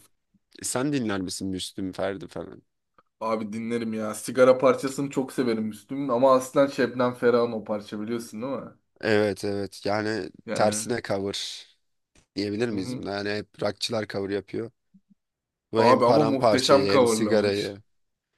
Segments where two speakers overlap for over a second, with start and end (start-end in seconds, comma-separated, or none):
15.8-17.8